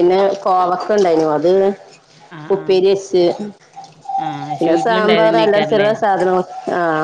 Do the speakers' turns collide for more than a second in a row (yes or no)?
yes